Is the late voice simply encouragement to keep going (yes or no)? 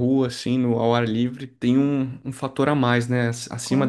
no